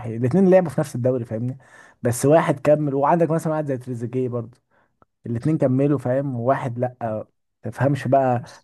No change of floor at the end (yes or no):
yes